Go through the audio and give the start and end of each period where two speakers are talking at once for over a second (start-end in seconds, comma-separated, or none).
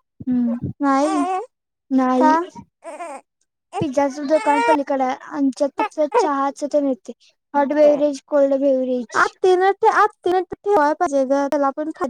none